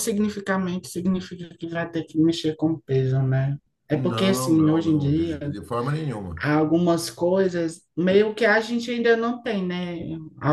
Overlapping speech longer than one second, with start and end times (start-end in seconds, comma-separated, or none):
3.9-5.4